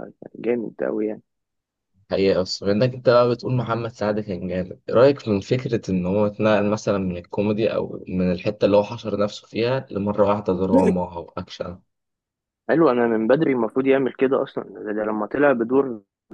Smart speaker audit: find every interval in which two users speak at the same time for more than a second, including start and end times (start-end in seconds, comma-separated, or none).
none